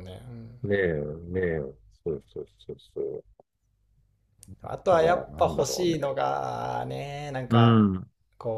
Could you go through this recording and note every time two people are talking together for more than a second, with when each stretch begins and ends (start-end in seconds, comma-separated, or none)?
4.7-6.1